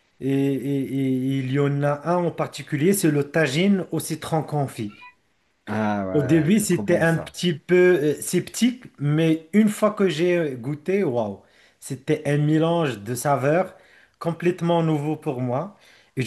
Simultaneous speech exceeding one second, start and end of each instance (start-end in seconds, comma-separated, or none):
6.1-7.4